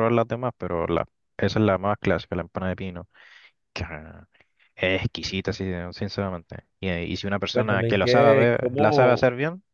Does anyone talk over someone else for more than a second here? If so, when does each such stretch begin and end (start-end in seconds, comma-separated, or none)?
7.5-9.2